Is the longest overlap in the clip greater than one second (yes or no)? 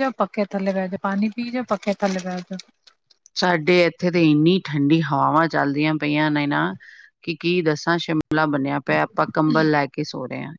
no